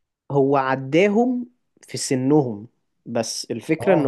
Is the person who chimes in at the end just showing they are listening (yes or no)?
yes